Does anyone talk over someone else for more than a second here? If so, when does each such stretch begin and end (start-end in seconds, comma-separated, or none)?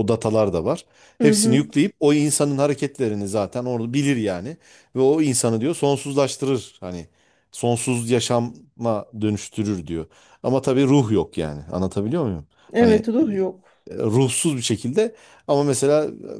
none